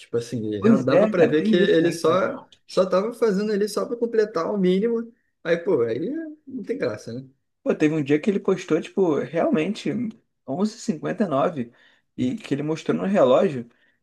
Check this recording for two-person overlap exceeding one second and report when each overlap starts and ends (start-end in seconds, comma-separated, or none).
0.6-2.2